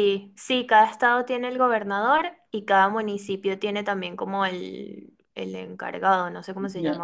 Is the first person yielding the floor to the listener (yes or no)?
yes